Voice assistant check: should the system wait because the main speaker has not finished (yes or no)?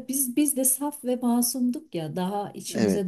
yes